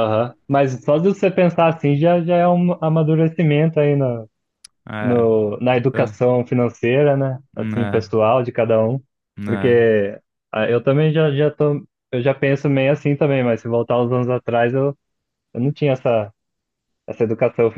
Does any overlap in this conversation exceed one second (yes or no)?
no